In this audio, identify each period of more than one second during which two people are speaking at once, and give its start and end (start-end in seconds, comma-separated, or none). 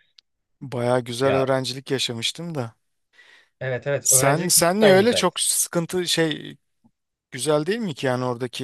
4.0-5.3